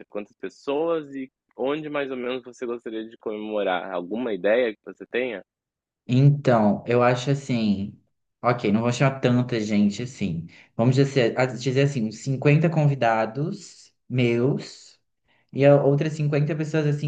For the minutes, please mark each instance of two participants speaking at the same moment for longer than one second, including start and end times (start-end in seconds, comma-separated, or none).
none